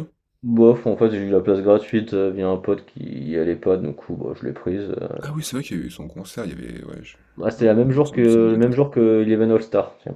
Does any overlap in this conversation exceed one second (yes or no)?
yes